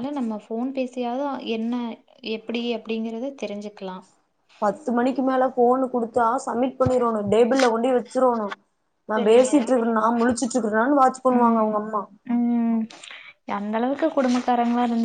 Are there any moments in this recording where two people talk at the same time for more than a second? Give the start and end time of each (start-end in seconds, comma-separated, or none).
none